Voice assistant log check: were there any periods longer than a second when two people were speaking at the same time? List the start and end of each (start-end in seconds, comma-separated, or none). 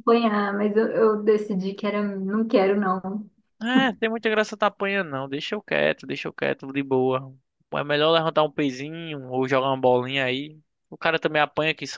none